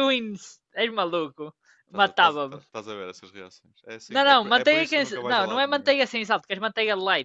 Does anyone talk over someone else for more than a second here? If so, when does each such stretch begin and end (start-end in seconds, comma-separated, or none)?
4.1-5.9